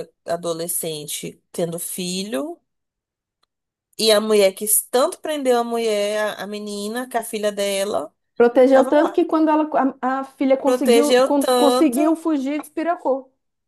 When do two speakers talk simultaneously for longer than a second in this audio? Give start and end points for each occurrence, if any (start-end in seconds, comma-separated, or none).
10.7-12.0